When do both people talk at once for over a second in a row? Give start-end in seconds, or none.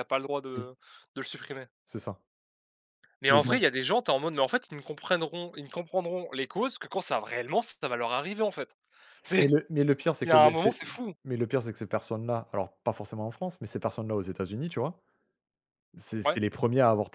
none